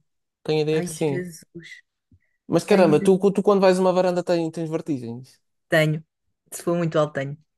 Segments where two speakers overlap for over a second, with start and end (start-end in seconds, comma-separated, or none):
none